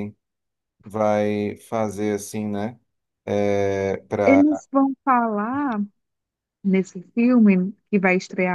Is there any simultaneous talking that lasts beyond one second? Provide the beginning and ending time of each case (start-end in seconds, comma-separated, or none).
none